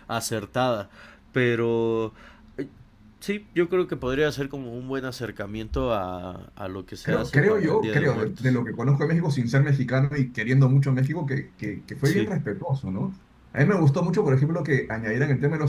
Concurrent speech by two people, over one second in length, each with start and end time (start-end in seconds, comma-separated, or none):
7.0-8.6